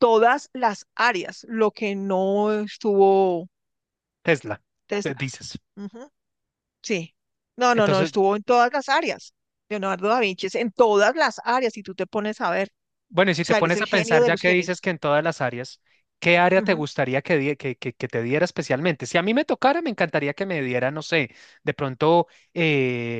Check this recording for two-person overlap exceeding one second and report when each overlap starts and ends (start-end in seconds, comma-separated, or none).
13.4-14.8